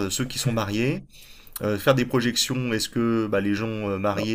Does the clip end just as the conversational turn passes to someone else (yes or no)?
no